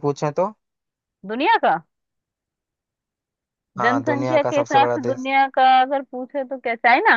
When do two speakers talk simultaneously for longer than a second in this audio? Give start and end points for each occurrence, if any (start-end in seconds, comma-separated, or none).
3.8-5.3